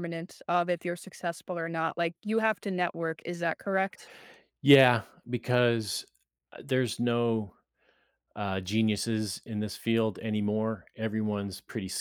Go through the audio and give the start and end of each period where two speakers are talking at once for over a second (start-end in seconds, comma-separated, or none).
none